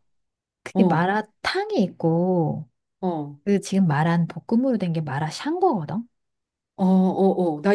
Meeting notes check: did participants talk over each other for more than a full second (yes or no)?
no